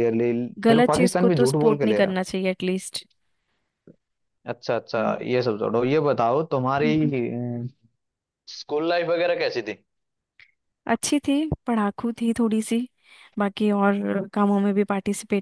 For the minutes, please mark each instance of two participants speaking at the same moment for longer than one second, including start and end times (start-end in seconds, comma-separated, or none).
0.7-2.1